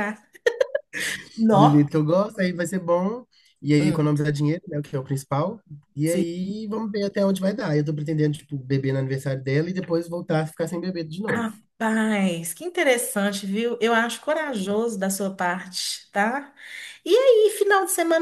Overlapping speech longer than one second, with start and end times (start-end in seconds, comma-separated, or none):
none